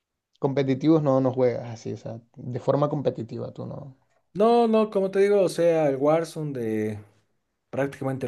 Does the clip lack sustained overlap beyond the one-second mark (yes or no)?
yes